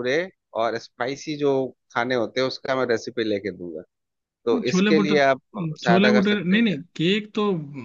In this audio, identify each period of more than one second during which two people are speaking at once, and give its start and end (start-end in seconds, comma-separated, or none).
4.5-6.8